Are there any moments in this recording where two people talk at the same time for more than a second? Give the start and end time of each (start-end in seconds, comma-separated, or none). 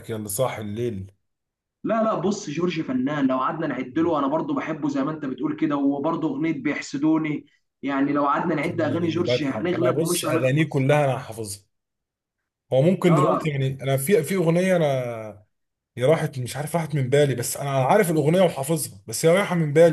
8.6-10.9